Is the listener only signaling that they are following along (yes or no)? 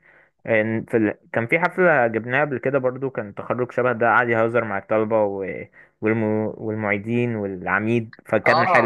no